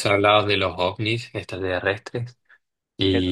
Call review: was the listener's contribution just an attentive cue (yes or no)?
yes